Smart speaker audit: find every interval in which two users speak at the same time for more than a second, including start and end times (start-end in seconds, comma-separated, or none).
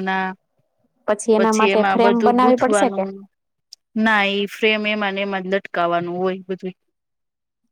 1.4-3.0